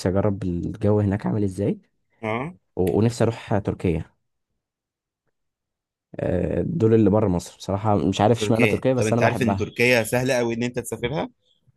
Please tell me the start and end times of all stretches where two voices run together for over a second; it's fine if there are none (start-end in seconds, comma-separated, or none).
8.4-9.7